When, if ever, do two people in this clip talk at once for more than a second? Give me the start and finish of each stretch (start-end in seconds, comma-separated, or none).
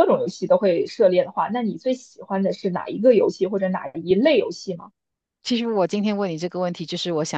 none